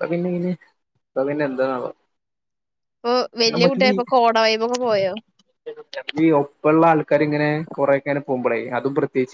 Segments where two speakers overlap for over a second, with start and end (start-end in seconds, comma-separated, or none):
none